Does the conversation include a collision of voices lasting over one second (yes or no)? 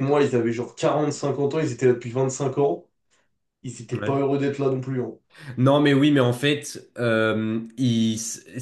no